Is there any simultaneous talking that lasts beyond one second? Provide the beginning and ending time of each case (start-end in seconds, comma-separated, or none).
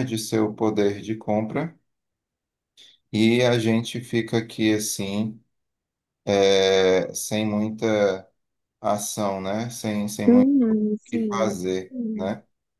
10.3-12.3